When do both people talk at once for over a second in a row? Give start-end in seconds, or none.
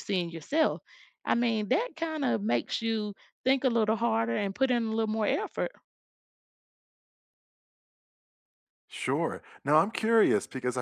none